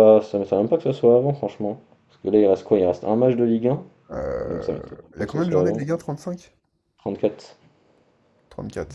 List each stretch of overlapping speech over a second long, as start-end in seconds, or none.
4.5-5.8